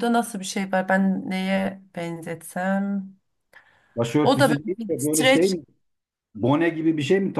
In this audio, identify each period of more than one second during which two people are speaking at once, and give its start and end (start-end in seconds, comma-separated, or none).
4.2-5.6